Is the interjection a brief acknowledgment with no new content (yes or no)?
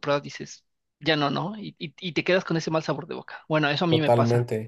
no